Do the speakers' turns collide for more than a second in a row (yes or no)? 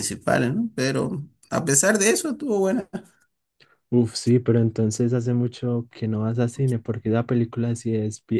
no